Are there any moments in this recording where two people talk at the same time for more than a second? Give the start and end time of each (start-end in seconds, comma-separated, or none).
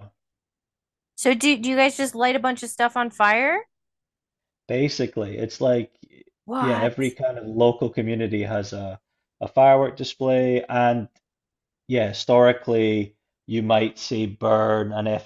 none